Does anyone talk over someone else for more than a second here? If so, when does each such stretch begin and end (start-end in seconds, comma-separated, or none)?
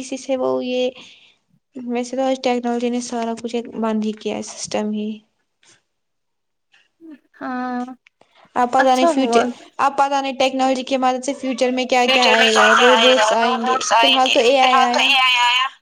12.1-15.1